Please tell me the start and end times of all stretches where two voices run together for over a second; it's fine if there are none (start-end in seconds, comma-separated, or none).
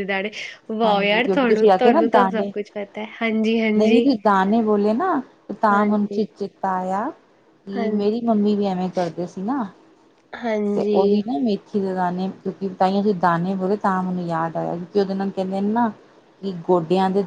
0.8-2.5